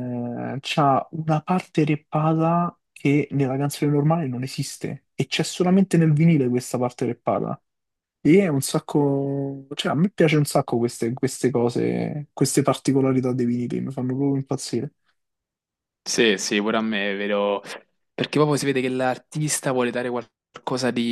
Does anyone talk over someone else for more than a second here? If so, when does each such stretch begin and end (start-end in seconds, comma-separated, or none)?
none